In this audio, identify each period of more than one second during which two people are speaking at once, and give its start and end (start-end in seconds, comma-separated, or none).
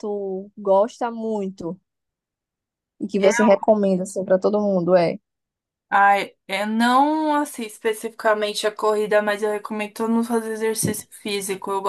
none